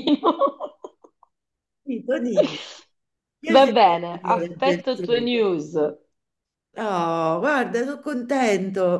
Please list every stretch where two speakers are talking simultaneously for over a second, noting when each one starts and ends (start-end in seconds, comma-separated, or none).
3.5-5.3